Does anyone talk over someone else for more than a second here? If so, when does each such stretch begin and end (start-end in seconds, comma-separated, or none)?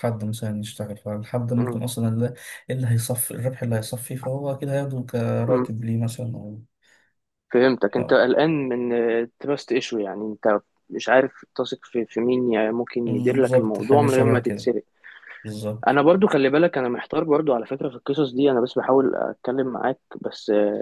13.0-14.7